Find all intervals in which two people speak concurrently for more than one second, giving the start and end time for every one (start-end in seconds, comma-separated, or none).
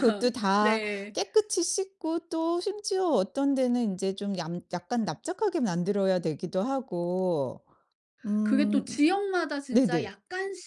none